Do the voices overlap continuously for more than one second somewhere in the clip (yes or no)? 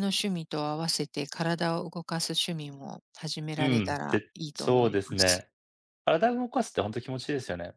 yes